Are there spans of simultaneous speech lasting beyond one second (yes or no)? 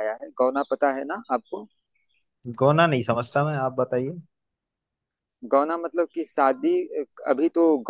no